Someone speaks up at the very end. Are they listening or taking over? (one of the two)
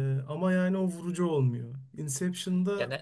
listening